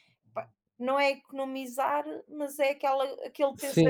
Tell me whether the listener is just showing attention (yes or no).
no